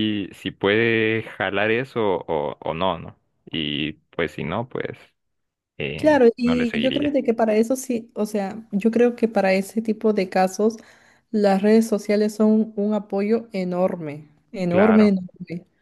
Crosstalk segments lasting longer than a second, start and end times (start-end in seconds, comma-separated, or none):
6.0-7.2